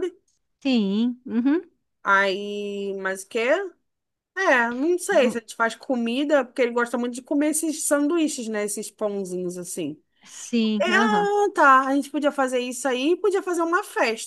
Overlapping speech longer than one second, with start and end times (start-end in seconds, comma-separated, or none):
none